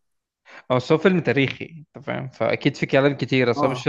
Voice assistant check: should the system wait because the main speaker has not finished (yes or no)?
no